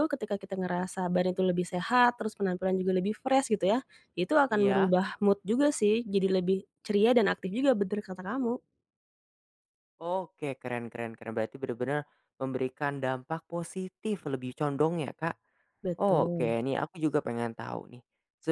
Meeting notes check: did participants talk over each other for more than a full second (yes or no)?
no